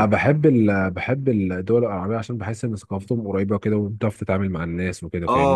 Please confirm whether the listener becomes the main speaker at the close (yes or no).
yes